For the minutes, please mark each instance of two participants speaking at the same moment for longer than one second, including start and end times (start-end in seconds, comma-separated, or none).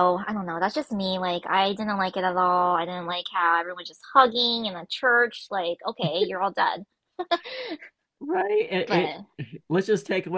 none